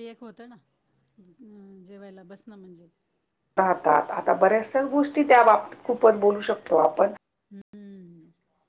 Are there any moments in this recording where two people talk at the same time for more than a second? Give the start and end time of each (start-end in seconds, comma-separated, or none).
none